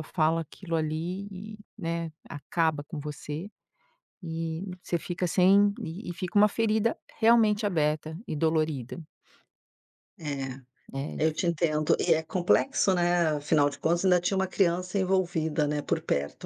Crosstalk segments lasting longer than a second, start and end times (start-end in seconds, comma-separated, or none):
none